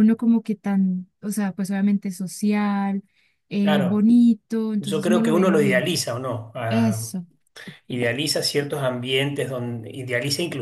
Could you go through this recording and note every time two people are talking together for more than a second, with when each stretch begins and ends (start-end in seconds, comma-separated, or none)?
4.8-6.0